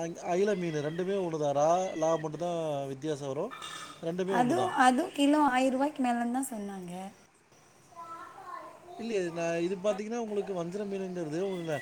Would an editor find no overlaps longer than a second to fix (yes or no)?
yes